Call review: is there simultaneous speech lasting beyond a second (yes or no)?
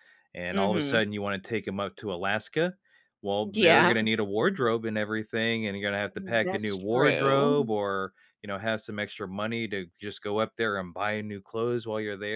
yes